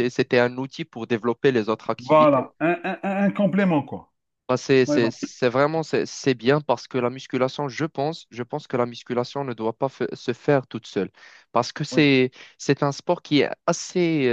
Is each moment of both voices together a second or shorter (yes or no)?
yes